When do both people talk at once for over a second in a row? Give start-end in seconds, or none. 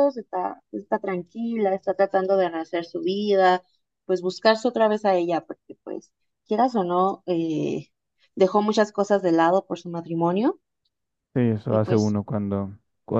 none